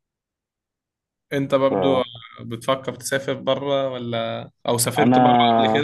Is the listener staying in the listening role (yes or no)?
no